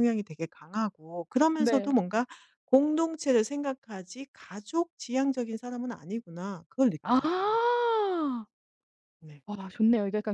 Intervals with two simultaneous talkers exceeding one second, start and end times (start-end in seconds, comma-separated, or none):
none